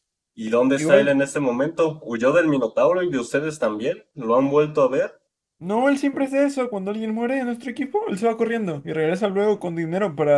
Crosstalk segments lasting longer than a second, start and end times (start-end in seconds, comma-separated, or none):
none